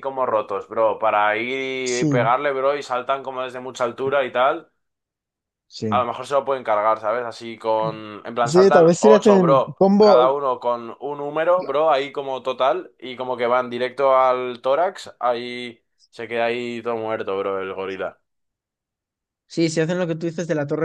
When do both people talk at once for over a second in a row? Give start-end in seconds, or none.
8.4-10.3